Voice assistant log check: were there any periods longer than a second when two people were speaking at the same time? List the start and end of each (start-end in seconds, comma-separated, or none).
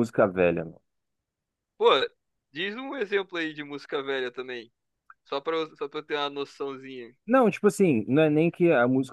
none